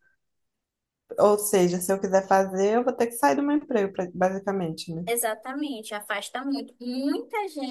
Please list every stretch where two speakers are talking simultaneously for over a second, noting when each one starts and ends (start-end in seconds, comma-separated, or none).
none